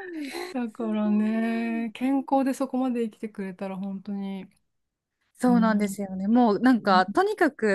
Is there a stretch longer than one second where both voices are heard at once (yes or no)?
yes